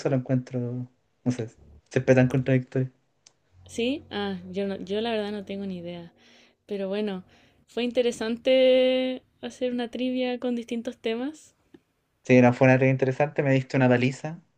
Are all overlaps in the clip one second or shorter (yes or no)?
yes